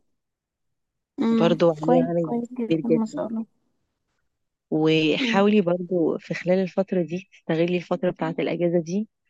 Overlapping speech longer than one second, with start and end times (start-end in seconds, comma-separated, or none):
1.3-3.3